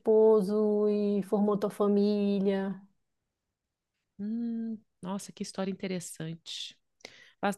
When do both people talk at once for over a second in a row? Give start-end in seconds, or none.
none